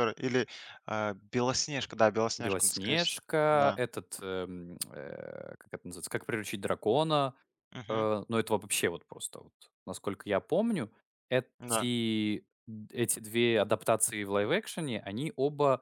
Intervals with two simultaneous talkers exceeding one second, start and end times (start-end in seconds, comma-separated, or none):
2.4-3.8